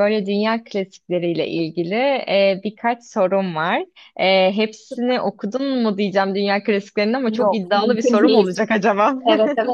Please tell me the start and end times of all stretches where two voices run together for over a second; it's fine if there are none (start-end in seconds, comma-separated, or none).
7.3-8.6